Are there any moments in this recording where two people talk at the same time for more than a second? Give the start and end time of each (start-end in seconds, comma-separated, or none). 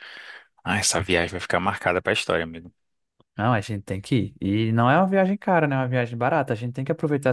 none